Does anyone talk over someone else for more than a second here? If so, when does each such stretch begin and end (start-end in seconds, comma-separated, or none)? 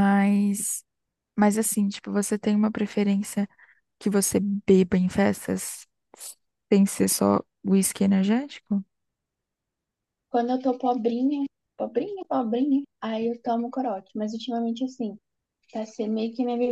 none